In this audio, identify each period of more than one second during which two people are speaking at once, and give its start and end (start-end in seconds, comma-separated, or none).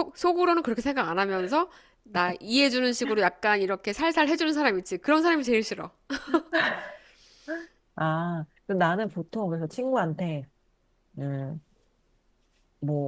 none